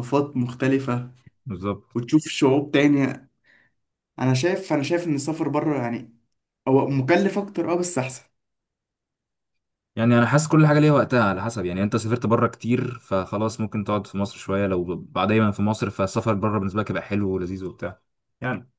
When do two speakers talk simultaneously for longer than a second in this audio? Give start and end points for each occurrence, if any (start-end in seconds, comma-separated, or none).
none